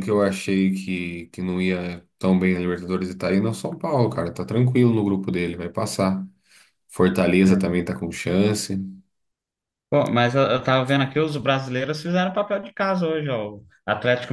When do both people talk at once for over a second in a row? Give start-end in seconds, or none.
none